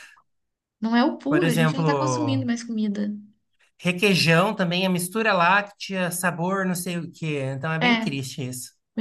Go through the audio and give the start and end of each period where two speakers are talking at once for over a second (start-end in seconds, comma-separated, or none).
1.3-2.5